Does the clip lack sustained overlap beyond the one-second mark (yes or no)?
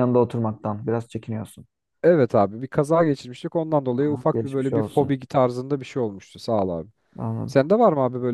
no